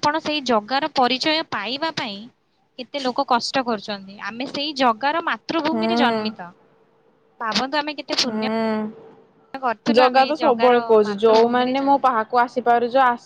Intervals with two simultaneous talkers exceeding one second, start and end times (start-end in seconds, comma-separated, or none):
10.0-12.0